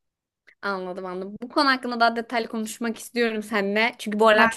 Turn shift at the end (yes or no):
no